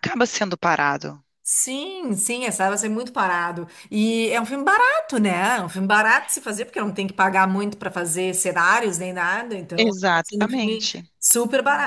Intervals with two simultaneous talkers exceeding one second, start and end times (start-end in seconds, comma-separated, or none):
9.8-11.0